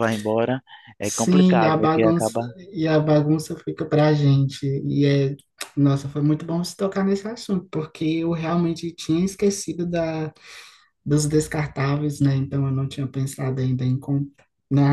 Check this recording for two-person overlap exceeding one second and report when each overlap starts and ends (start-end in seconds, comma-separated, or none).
1.0-2.4